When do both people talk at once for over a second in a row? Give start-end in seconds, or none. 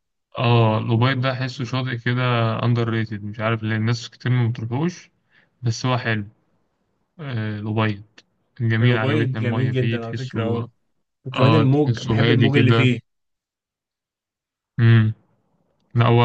8.8-10.7, 11.3-12.9